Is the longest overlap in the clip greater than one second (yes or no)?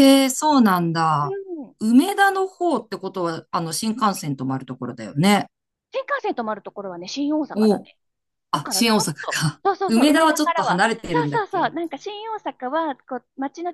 yes